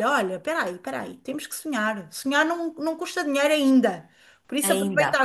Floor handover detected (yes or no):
no